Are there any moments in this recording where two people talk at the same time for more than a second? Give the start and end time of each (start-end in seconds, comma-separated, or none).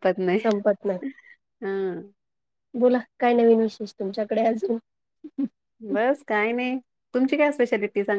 none